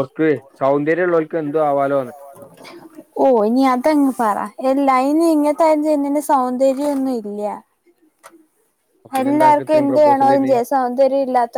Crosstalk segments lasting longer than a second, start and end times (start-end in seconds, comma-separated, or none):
9.2-10.5